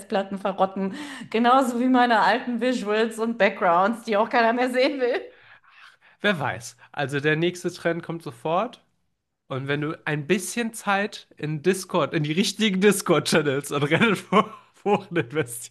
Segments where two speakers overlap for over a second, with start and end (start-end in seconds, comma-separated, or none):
none